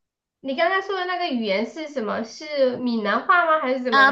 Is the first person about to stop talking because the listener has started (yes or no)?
yes